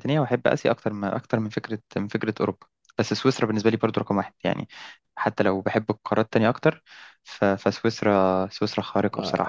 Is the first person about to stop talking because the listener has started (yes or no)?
yes